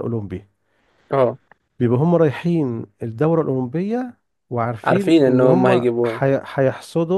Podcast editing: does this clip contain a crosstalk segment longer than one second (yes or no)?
yes